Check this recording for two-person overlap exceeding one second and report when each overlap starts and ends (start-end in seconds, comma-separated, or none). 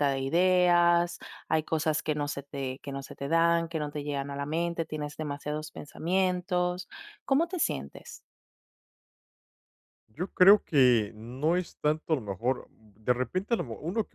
none